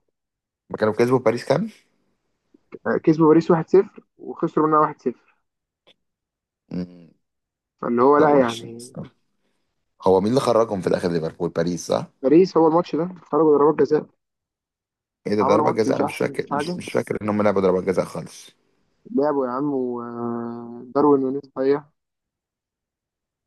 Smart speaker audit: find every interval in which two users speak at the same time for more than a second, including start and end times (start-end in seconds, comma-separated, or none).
15.4-16.8